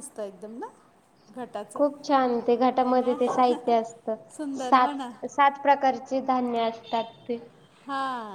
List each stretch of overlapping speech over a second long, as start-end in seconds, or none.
none